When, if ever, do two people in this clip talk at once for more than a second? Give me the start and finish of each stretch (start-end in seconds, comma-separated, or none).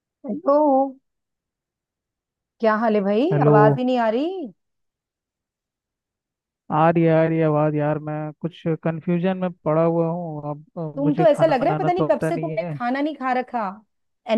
11.0-12.8